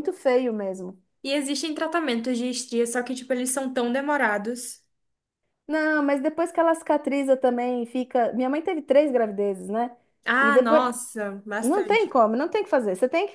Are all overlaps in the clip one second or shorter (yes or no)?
yes